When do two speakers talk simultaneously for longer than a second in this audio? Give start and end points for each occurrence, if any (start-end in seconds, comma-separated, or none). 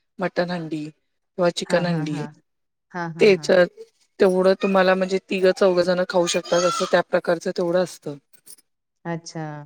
none